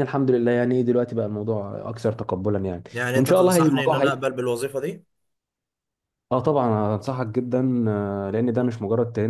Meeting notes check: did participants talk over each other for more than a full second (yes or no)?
yes